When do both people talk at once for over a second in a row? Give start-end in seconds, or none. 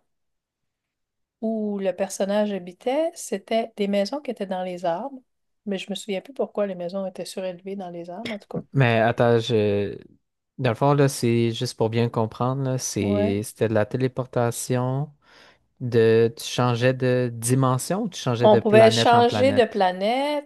18.4-19.8